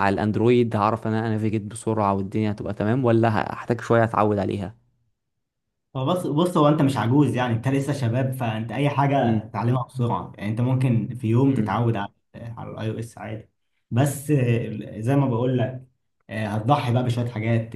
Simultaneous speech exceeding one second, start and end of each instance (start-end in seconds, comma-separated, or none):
none